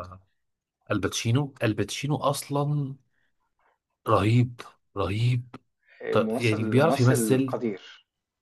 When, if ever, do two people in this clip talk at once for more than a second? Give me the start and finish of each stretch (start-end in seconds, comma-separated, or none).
6.1-7.6